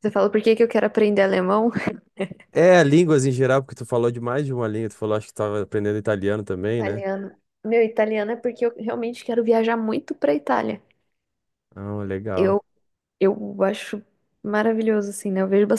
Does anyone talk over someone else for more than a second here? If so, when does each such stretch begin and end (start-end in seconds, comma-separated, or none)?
none